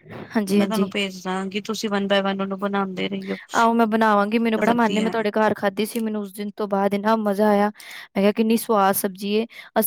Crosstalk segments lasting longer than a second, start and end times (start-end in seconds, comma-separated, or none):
3.6-5.1